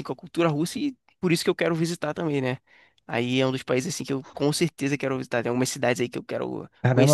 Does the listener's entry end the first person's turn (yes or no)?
yes